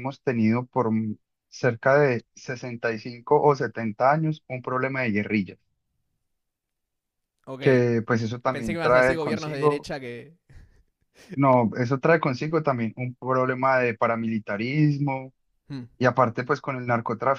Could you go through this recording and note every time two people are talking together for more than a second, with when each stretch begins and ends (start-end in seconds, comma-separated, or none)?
8.5-9.9